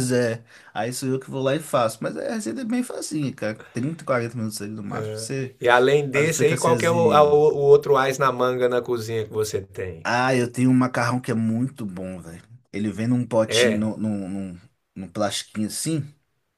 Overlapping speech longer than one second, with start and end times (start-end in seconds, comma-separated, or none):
6.1-7.4